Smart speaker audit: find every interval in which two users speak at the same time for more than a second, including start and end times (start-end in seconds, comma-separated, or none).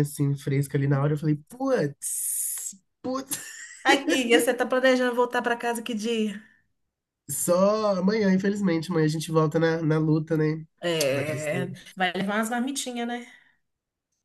none